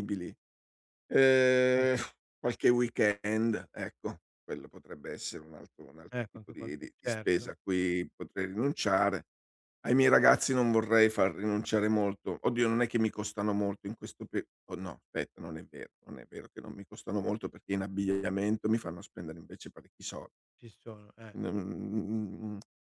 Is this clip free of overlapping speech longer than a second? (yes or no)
no